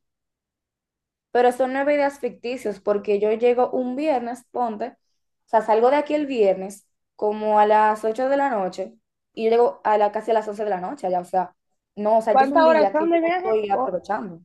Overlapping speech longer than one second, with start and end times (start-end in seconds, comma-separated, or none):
12.3-13.9